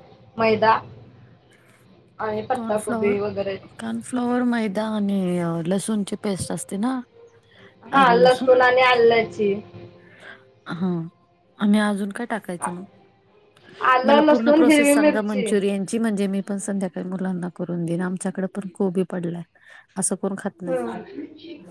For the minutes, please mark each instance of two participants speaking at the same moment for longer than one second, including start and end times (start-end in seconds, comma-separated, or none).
14.1-15.5